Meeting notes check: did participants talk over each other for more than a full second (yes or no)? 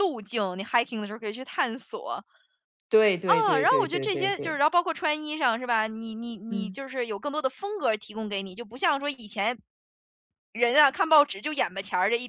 yes